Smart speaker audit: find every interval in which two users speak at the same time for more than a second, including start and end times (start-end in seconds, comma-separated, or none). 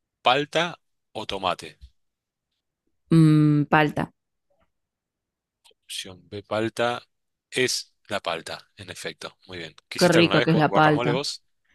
10.0-11.2